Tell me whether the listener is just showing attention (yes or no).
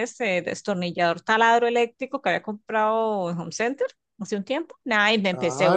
no